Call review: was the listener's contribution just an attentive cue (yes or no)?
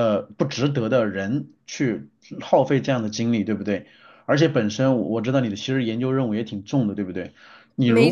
yes